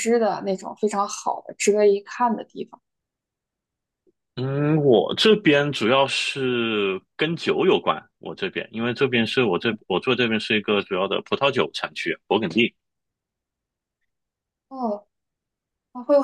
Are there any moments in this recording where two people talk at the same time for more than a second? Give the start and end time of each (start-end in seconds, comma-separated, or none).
none